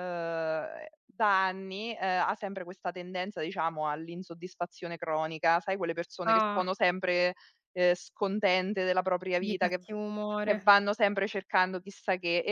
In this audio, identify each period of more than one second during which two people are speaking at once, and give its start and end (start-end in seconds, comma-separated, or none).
none